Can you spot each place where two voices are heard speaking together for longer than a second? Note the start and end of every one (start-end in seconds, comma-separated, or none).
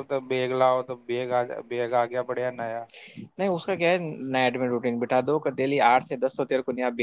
none